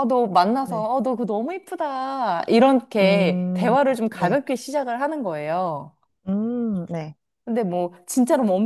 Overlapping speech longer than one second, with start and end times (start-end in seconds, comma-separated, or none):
3.0-4.4